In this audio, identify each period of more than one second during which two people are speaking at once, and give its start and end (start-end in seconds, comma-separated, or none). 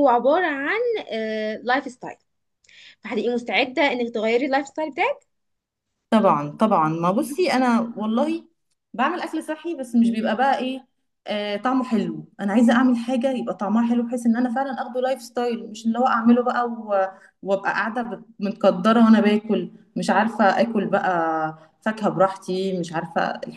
none